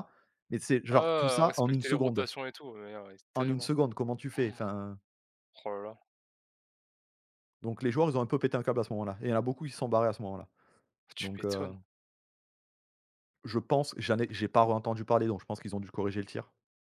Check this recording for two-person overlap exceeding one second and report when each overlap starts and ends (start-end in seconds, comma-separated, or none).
0.9-2.3